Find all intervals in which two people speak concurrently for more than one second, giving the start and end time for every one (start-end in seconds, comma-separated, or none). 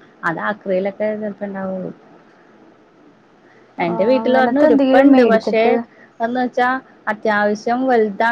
3.9-5.6